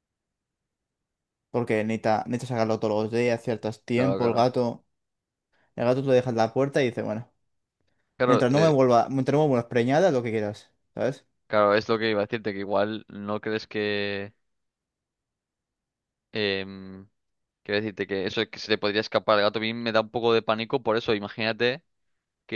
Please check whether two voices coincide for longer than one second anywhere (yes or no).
no